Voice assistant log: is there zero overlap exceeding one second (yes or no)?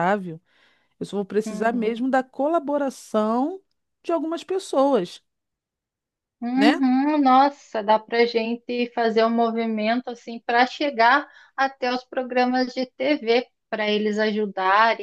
yes